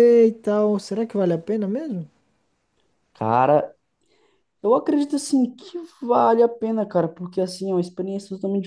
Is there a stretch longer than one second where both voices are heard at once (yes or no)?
no